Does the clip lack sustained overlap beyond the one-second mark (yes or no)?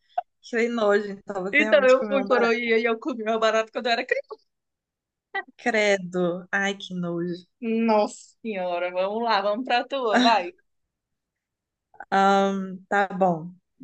no